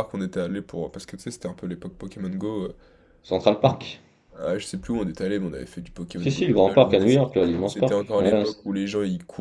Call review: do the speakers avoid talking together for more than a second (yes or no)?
no